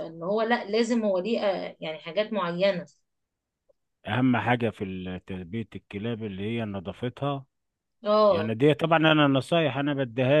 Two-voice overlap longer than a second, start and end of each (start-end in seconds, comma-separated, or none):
none